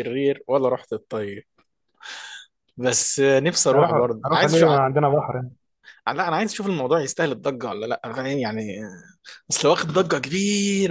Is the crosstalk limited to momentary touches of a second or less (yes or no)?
no